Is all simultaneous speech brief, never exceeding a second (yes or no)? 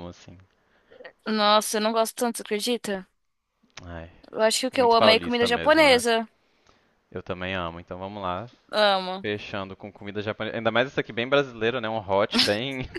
no